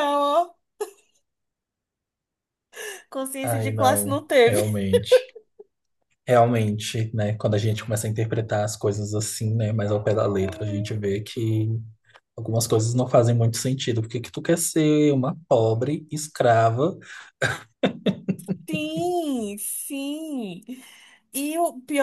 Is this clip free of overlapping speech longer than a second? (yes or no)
no